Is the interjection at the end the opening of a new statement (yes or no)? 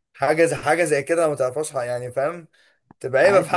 yes